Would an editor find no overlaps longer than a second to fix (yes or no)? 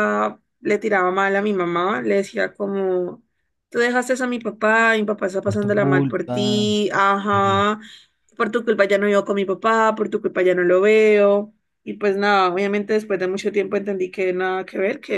no